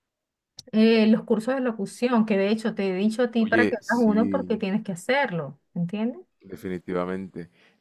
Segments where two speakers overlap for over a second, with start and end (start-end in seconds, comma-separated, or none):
3.4-4.6